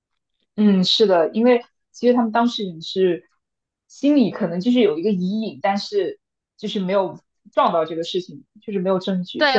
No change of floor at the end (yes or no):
no